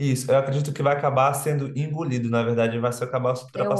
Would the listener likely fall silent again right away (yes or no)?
yes